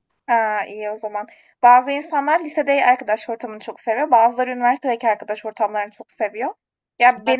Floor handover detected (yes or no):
no